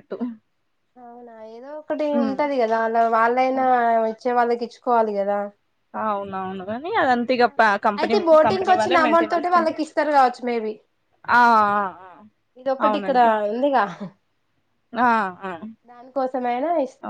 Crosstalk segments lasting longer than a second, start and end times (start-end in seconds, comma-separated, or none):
8.0-9.8